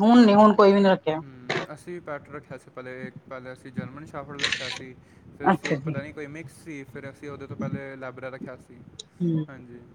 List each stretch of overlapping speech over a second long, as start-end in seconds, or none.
none